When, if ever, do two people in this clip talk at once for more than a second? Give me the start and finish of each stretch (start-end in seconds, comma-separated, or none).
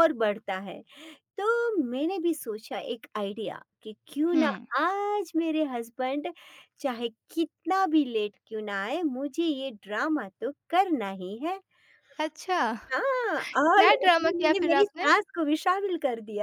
13.6-15.1